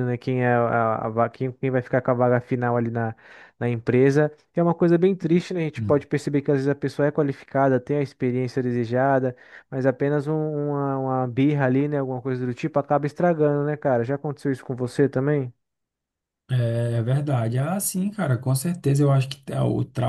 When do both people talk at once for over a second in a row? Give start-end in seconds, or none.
none